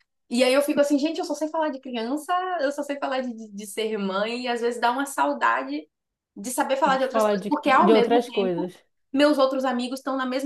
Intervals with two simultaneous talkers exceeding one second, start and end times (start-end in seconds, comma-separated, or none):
6.8-8.7